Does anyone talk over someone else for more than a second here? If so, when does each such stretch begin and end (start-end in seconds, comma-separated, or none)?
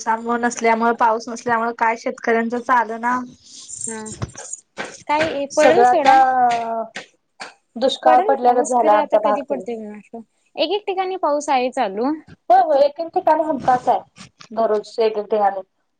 8.0-9.6